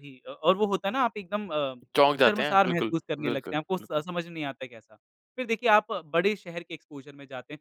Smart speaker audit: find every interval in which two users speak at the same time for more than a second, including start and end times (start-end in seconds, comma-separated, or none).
2.2-4.0